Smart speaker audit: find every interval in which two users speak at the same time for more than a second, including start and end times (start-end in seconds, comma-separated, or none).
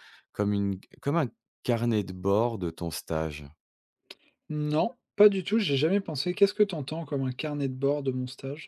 none